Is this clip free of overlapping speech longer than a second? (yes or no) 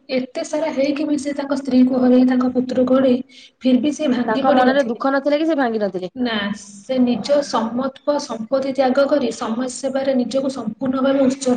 yes